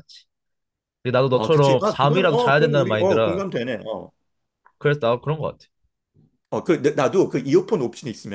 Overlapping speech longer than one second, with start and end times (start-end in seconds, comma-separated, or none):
1.3-3.4